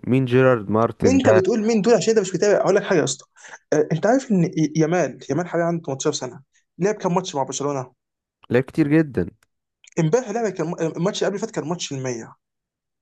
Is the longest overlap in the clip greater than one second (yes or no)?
no